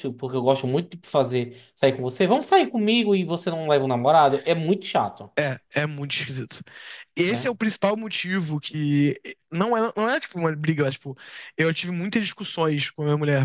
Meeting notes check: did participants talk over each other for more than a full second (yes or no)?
no